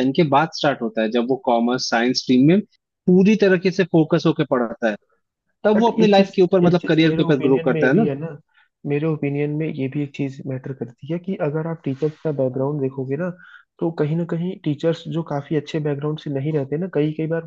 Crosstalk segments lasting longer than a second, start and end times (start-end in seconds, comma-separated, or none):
5.8-8.1